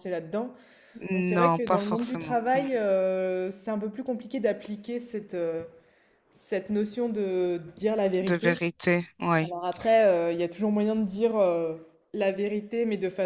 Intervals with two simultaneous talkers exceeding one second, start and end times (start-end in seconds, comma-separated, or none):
1.3-2.7